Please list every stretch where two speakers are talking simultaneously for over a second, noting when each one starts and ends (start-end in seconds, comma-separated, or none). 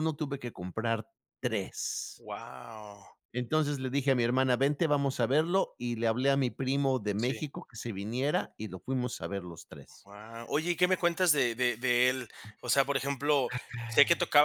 none